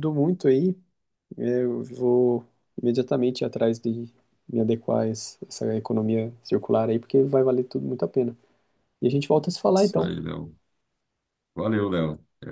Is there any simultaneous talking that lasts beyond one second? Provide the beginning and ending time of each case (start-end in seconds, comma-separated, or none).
none